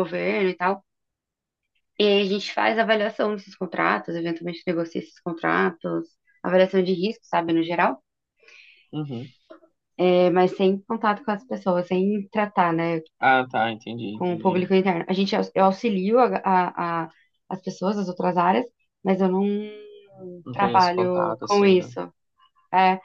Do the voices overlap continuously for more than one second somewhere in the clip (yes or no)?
yes